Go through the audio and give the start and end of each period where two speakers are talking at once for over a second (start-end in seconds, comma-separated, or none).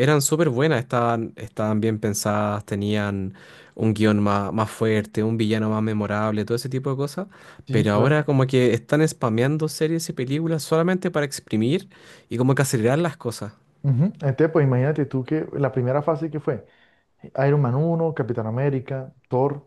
none